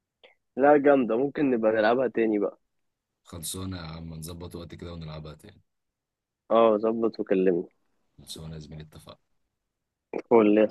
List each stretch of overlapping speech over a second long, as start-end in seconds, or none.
none